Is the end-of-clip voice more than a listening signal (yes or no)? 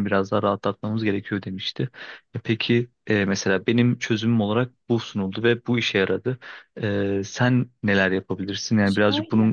yes